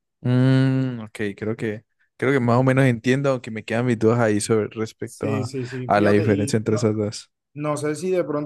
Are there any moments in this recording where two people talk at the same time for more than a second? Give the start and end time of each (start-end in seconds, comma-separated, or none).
5.0-6.9